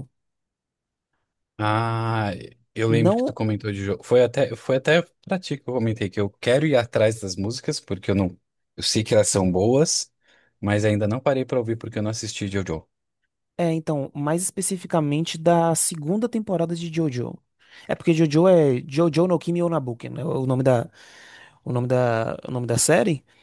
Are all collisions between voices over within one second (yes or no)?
yes